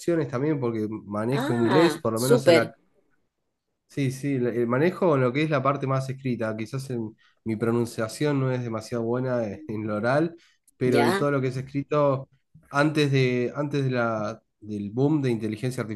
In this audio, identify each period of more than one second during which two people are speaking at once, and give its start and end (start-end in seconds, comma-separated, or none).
1.3-2.7